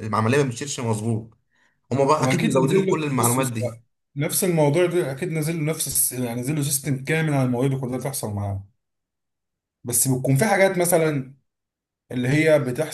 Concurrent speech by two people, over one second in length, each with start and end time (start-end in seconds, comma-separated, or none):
2.1-3.5